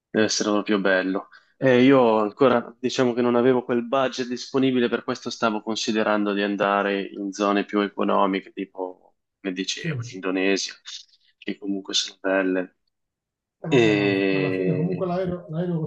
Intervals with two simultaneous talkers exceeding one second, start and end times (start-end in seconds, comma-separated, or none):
13.7-15.1